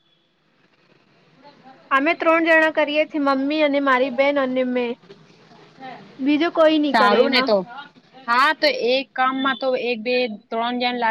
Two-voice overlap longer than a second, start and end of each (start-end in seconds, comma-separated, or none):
none